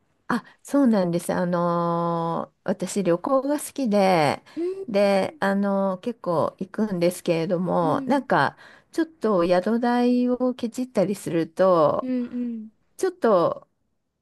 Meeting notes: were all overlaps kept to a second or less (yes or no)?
yes